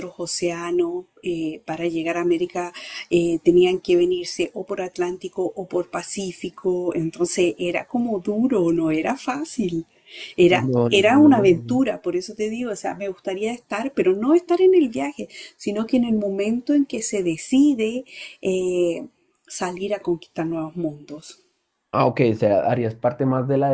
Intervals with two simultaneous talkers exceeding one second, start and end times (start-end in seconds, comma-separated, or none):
10.5-11.8